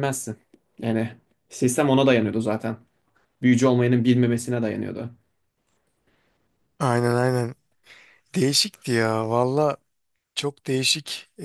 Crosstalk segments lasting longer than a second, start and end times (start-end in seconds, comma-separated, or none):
none